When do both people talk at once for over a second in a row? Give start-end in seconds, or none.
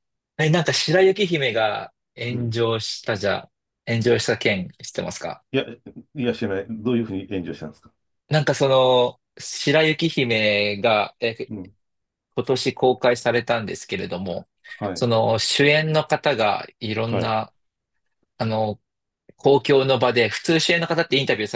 none